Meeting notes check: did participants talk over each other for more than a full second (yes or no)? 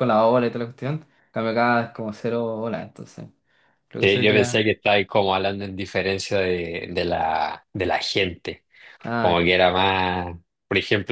no